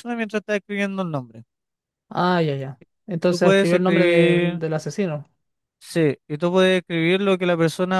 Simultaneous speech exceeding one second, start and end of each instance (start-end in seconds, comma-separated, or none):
3.3-4.6